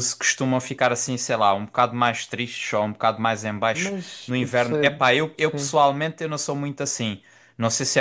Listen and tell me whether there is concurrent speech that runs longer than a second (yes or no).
yes